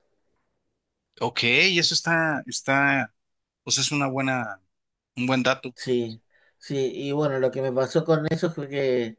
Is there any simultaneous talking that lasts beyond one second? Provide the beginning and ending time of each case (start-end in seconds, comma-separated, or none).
none